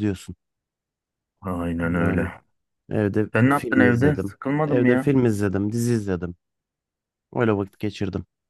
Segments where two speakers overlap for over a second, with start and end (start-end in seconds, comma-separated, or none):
3.3-5.1